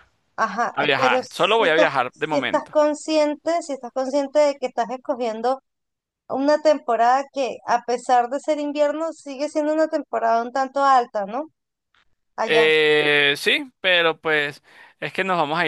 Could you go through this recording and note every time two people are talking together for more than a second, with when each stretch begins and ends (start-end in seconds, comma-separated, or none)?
0.7-2.8